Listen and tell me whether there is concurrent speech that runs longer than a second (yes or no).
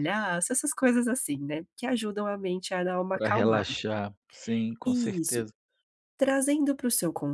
no